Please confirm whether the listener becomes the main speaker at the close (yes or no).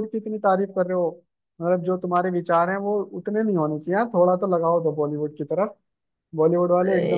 yes